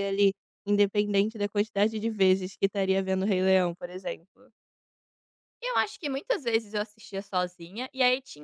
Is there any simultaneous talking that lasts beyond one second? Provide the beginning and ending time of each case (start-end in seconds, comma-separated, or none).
none